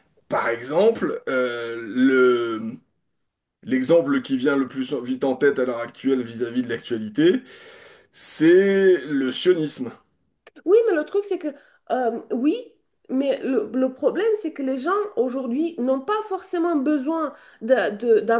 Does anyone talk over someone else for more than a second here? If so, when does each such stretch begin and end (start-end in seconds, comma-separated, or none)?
none